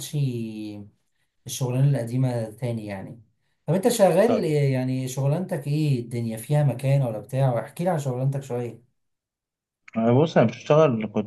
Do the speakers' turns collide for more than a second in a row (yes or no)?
no